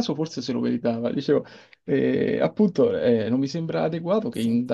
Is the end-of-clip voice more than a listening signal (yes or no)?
no